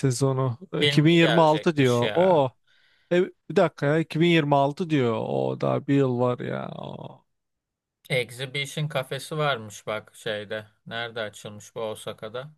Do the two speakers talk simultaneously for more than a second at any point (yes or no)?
yes